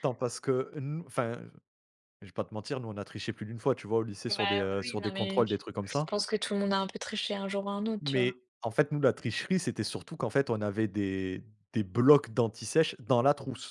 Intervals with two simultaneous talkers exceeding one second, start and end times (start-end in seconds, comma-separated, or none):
4.3-6.2